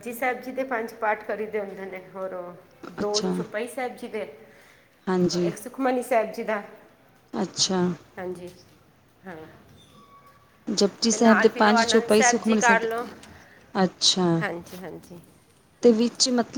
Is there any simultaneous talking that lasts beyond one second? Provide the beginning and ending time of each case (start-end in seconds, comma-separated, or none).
11.1-12.9